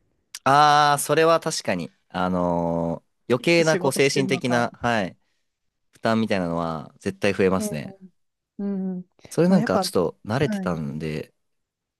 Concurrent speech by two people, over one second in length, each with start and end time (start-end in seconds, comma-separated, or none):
3.4-4.7, 9.5-10.8